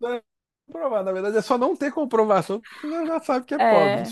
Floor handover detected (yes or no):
yes